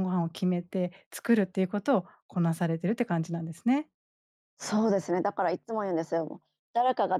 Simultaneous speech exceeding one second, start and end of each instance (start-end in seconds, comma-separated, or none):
none